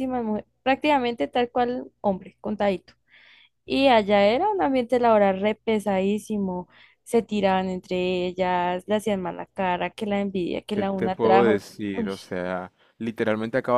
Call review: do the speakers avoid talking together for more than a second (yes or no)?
no